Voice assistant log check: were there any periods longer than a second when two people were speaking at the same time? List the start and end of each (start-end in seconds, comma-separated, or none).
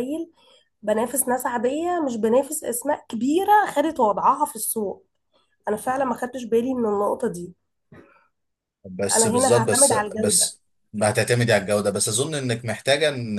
9.2-10.5